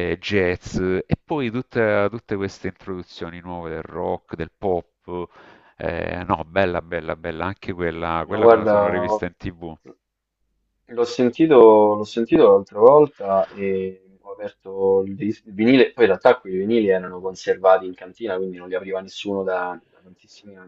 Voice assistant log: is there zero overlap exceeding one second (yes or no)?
yes